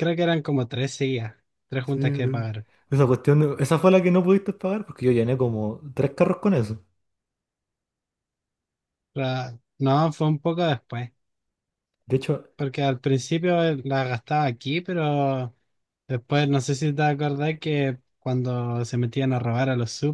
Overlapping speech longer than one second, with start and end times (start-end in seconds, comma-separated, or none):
none